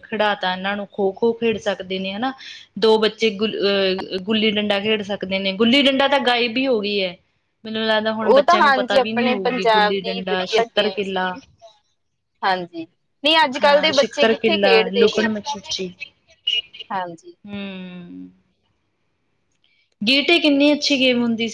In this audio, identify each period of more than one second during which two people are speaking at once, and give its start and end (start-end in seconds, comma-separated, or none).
8.3-11.3, 13.6-15.3